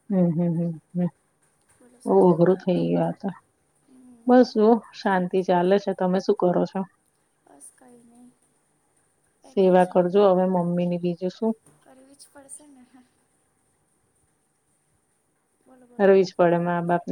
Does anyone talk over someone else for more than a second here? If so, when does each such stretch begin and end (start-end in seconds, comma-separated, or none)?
none